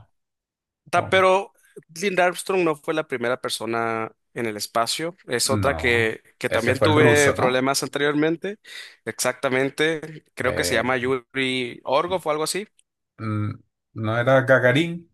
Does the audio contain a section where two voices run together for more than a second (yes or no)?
yes